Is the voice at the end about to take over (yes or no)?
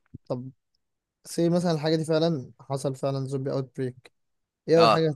no